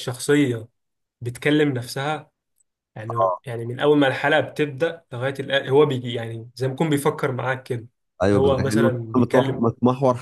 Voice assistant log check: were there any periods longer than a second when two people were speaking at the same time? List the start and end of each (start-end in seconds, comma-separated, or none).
8.3-9.7